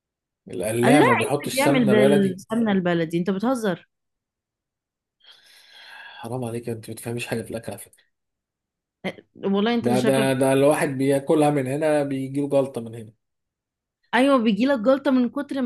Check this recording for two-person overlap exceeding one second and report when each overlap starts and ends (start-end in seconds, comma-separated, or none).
0.8-2.4